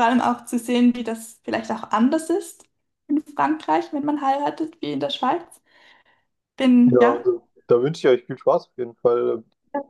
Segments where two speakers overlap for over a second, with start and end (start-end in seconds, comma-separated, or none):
none